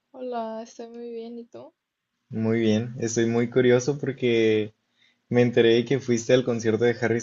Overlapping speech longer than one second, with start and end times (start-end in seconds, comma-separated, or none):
none